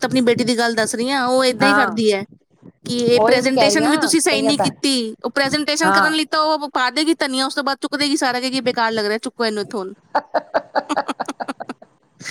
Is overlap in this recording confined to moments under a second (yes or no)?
no